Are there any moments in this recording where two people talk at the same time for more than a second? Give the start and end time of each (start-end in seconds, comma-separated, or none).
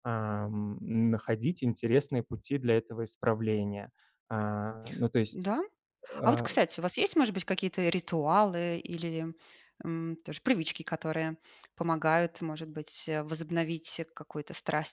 none